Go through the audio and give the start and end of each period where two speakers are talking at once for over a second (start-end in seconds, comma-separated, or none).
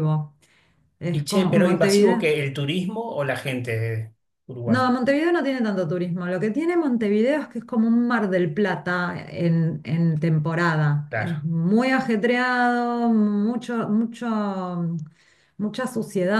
1.1-2.3